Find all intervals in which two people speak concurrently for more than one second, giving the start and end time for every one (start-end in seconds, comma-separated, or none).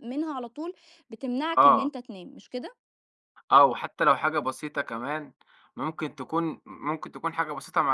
none